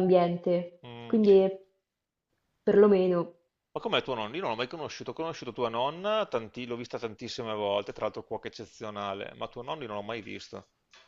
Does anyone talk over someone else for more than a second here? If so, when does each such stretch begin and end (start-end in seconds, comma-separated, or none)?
none